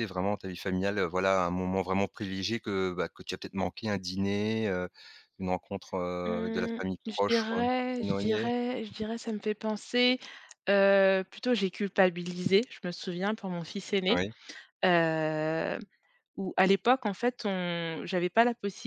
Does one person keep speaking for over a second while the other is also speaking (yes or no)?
yes